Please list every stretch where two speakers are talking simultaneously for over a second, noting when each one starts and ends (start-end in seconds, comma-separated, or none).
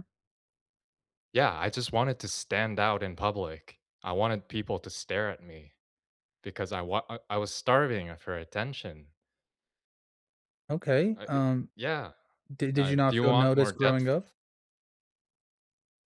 12.8-14.2